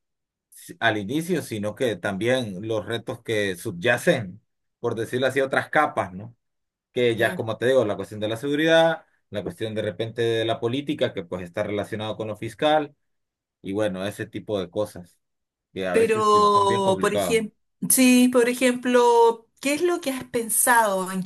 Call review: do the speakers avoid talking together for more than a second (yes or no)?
no